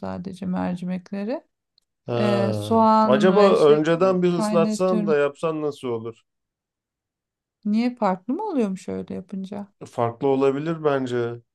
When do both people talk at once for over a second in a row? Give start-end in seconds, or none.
2.2-5.2